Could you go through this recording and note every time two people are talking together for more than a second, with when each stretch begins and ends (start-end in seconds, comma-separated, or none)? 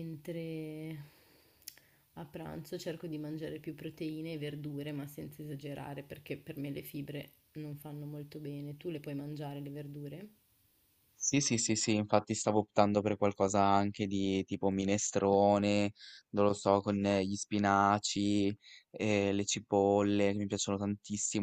none